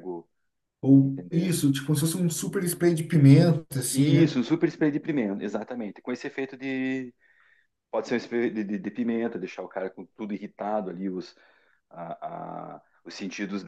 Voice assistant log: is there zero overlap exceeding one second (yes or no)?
yes